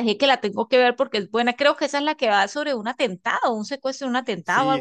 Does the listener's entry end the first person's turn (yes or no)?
yes